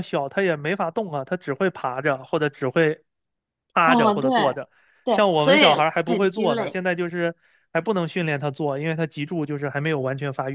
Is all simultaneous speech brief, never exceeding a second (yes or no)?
no